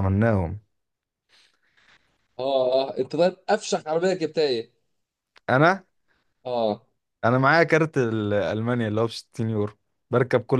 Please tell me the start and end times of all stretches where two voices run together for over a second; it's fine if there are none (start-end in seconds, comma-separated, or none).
none